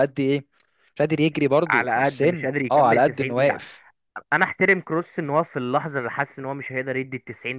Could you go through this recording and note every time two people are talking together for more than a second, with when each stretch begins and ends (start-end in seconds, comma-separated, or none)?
1.7-3.6